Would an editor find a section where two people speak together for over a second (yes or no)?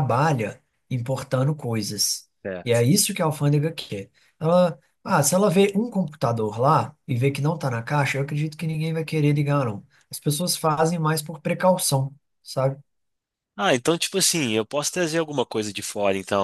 no